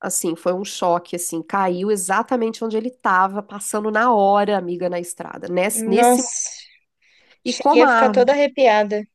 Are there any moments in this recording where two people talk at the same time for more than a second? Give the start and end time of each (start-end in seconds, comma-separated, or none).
none